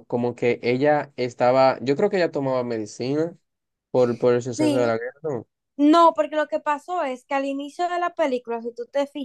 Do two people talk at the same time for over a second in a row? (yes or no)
no